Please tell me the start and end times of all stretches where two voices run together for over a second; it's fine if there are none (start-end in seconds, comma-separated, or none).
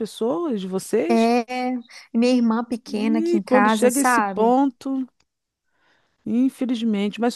2.9-4.6